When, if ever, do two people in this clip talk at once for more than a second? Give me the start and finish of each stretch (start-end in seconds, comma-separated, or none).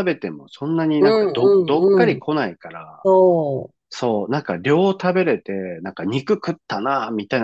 0.9-2.2